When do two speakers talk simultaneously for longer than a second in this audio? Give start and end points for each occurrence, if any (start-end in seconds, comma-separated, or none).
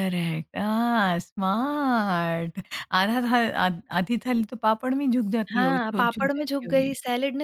5.5-6.9